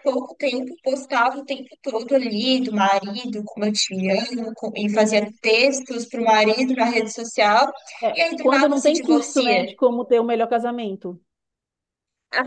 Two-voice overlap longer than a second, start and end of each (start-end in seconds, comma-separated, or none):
8.1-9.7